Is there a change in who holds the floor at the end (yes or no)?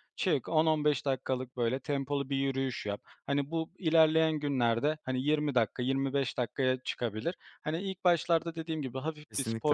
no